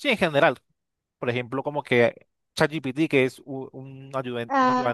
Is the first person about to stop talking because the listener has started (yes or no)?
yes